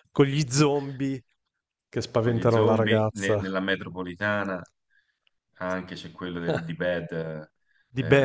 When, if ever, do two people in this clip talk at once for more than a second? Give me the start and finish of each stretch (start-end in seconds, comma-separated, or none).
2.2-3.4